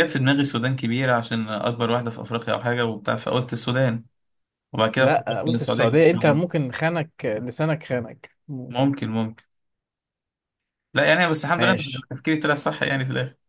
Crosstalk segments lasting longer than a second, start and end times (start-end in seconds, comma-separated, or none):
5.0-6.4